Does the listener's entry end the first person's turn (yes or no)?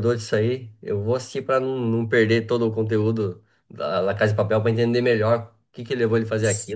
yes